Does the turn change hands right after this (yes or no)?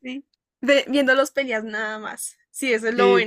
yes